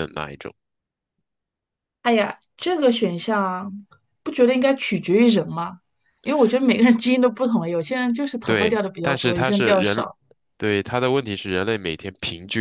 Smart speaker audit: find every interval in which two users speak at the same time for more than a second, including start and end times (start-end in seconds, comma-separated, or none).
8.4-10.1